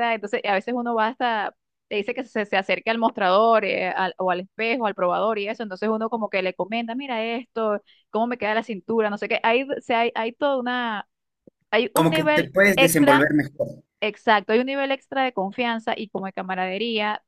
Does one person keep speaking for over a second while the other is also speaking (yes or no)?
yes